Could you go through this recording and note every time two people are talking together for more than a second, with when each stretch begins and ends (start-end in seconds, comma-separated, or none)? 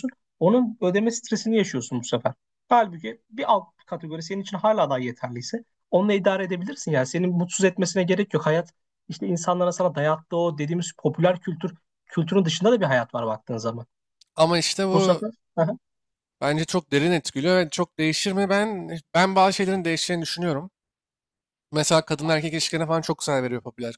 none